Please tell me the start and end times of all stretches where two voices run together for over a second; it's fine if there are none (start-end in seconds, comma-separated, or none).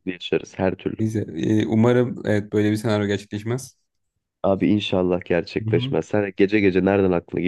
none